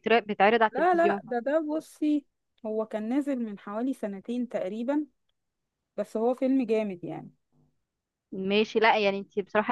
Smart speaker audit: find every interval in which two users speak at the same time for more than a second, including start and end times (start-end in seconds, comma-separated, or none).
none